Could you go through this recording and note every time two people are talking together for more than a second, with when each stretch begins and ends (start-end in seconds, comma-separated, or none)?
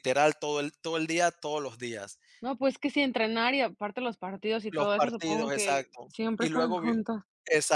4.7-6.9